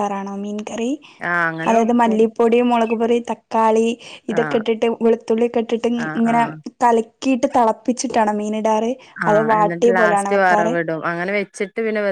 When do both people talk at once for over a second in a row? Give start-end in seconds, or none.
9.3-10.7